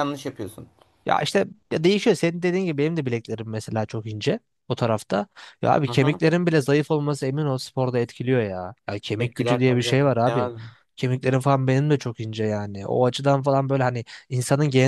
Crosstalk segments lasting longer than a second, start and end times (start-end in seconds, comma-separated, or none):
9.2-10.5